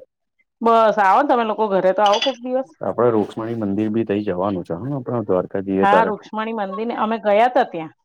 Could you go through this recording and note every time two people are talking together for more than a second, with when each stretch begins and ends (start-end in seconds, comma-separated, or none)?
none